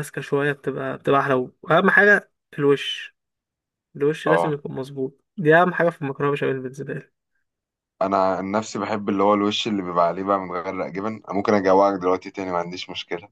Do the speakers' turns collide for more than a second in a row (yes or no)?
no